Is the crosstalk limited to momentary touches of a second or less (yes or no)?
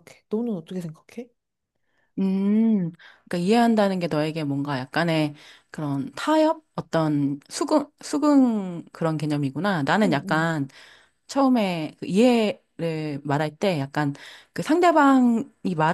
yes